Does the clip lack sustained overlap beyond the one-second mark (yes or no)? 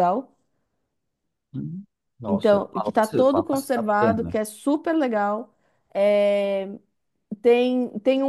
no